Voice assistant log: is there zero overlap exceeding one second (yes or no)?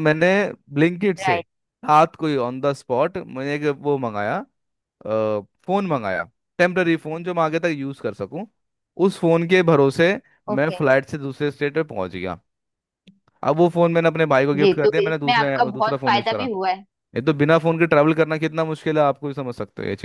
no